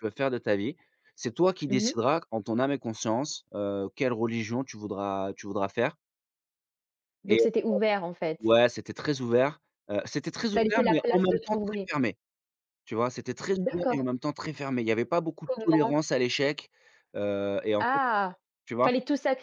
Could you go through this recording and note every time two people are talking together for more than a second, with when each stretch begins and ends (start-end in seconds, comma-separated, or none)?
10.5-11.9